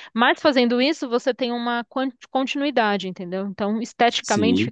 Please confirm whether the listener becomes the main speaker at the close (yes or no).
yes